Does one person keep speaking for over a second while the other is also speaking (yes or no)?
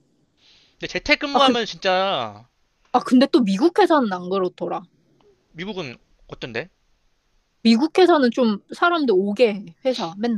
no